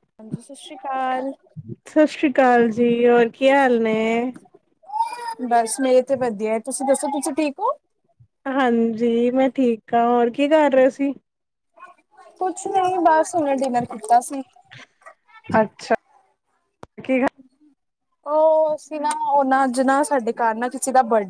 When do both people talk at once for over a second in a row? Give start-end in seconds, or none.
none